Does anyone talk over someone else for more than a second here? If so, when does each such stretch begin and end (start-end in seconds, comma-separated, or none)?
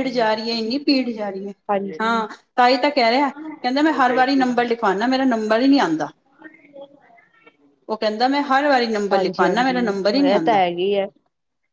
9.1-10.6